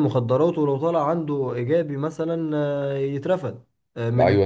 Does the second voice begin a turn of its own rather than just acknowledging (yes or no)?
yes